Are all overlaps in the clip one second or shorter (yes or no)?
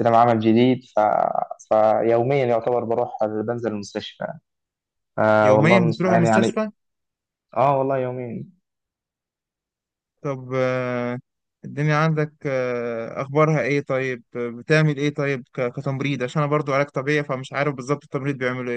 no